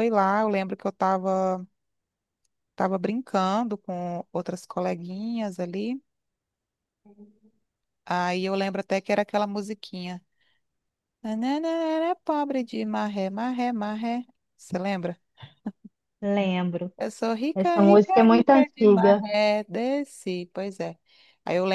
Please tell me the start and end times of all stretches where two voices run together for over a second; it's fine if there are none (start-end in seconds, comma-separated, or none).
17.5-19.3